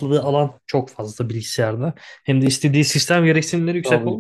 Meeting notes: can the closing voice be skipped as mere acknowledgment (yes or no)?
yes